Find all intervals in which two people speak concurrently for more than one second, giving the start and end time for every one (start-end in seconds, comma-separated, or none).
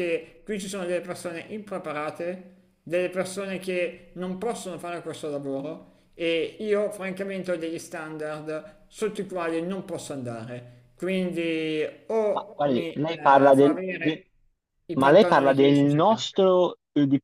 12.3-14.2, 15.0-16.3